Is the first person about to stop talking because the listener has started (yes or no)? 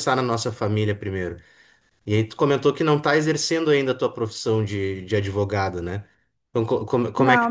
no